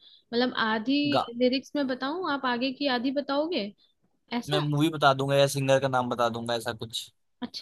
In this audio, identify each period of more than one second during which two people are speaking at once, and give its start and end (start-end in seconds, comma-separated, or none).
none